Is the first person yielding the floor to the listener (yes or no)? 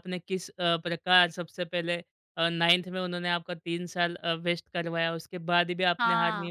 no